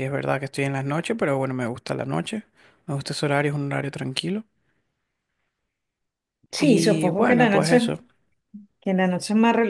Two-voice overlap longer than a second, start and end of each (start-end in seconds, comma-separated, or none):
6.6-8.0